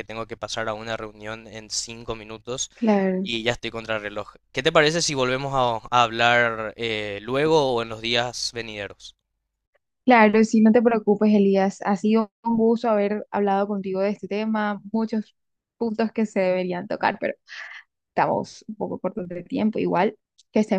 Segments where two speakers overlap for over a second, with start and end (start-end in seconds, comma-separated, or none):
none